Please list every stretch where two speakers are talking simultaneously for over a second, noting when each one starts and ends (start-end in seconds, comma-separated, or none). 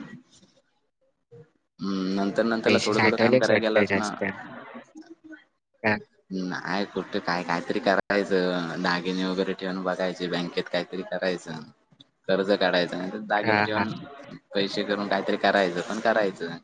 2.6-4.1